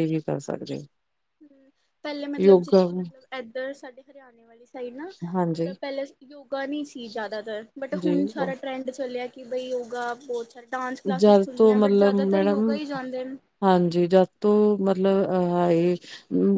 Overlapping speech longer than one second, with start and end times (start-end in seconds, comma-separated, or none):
11.2-12.8